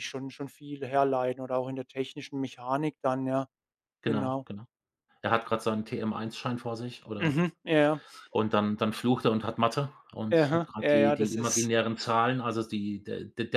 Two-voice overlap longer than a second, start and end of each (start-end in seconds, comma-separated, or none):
10.3-11.7